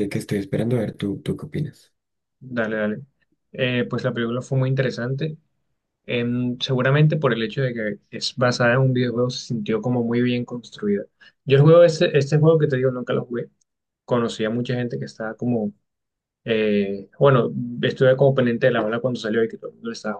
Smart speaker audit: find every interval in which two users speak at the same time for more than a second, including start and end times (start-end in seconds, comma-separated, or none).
none